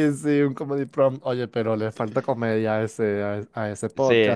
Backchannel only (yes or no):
no